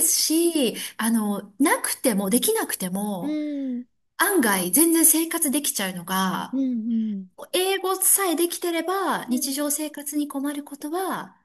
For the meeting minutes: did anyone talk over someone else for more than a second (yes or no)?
no